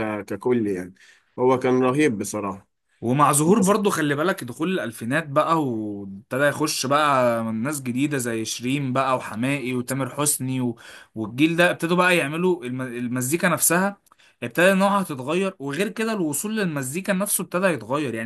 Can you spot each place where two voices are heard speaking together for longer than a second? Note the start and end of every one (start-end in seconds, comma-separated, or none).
none